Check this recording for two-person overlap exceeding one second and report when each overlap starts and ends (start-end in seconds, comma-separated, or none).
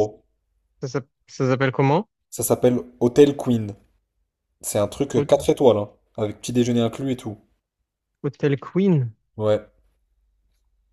none